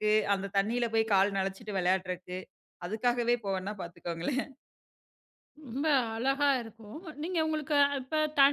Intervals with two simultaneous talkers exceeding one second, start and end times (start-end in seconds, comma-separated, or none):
none